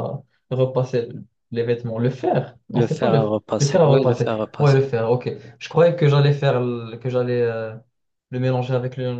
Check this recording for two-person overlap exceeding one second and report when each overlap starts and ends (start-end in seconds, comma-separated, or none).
2.8-4.8